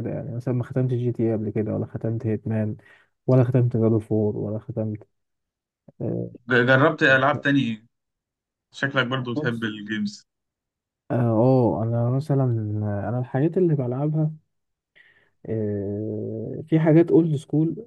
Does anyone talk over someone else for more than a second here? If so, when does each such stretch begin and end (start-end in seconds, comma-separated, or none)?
none